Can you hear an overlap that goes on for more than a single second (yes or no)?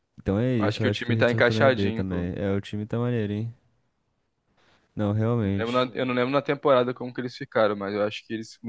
yes